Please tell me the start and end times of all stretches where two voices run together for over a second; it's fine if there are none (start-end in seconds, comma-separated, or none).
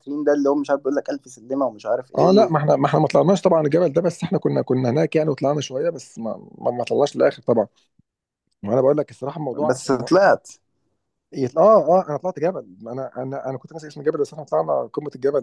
none